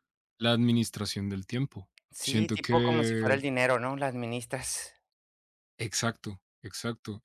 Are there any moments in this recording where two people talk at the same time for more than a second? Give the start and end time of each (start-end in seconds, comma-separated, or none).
2.1-3.4